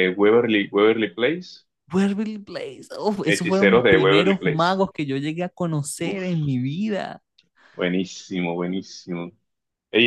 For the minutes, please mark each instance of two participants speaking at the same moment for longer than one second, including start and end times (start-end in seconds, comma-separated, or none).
3.3-4.8